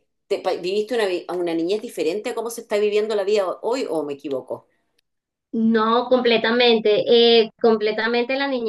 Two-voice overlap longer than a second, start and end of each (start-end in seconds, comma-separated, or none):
none